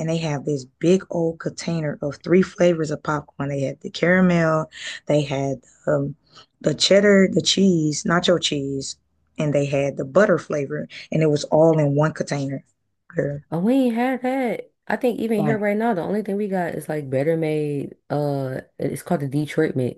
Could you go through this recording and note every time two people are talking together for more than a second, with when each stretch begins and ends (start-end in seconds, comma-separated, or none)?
none